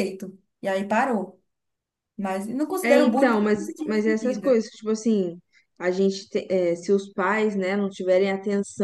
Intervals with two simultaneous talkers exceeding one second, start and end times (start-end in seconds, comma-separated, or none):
2.8-4.6